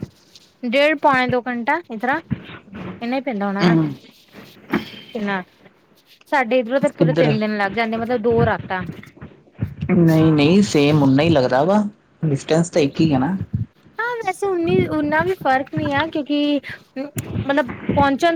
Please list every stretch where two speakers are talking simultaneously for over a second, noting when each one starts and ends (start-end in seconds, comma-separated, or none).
none